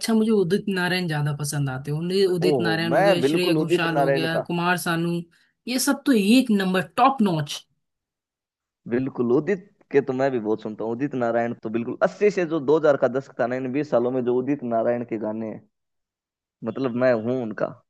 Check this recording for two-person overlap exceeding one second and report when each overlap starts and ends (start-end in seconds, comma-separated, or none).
2.5-4.5